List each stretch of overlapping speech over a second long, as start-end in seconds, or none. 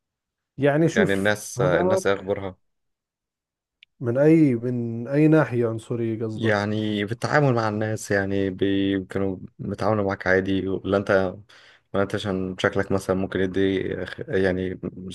0.9-2.4